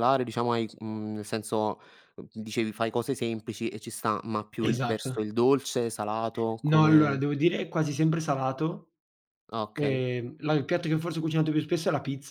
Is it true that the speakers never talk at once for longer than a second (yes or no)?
yes